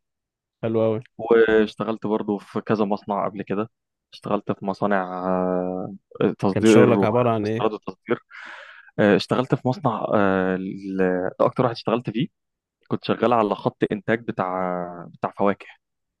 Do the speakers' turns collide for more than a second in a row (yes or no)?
yes